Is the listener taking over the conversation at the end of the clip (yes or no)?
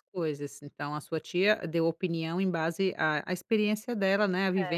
no